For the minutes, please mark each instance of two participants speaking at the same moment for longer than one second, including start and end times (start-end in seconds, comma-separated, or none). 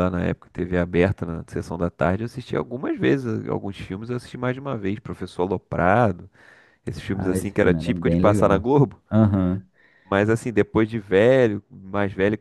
7.1-8.7